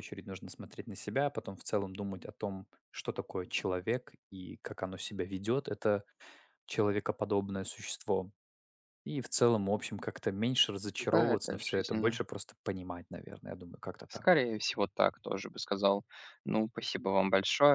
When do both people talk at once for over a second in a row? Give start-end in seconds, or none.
11.0-12.2